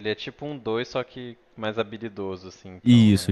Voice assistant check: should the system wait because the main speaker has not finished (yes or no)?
no